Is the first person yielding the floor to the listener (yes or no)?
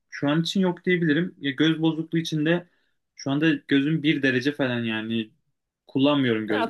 no